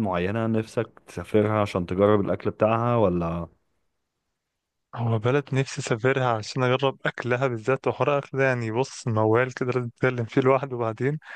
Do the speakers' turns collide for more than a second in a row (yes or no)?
no